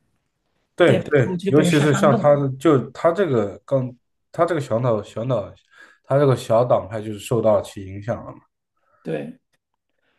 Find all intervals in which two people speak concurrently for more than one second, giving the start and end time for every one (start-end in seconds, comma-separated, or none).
0.8-2.4